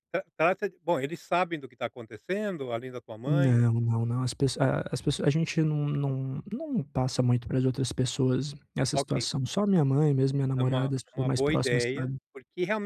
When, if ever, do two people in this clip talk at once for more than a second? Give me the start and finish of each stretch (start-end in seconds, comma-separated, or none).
10.6-12.2